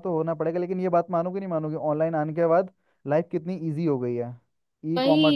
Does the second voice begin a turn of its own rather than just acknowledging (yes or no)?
yes